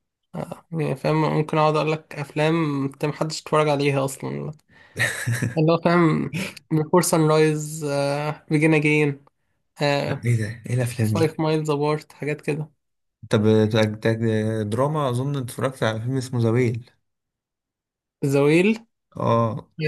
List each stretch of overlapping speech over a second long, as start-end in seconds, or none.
none